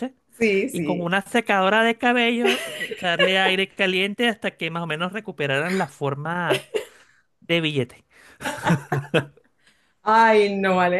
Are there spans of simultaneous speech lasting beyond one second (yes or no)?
no